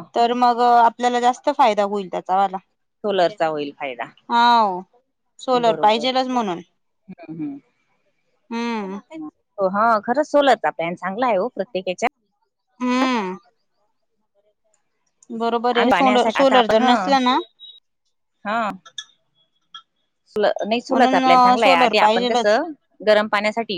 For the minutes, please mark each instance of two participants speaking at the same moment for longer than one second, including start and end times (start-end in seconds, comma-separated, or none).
15.8-17.1, 20.9-22.6